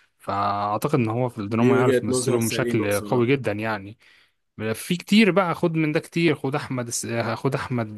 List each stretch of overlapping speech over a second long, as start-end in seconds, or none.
1.6-3.3